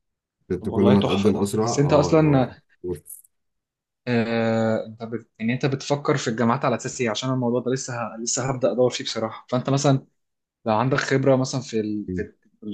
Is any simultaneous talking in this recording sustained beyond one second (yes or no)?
yes